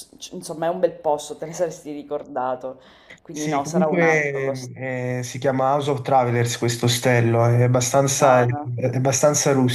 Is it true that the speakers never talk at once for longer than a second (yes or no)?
no